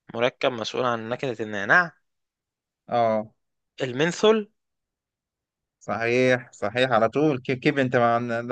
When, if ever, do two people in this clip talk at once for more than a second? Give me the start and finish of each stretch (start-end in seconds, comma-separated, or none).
none